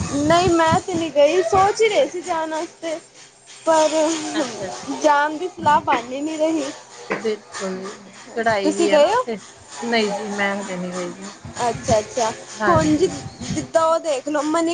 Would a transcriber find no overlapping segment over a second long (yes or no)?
yes